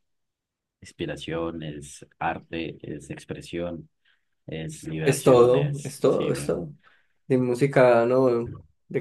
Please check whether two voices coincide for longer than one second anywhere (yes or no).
yes